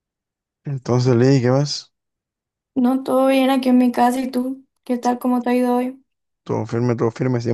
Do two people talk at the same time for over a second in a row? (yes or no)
no